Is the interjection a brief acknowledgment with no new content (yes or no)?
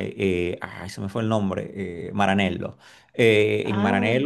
yes